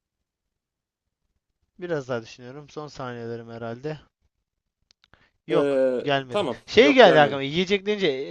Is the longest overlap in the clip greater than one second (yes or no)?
yes